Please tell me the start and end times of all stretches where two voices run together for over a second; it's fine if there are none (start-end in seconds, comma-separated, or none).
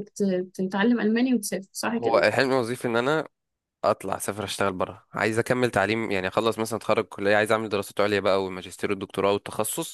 none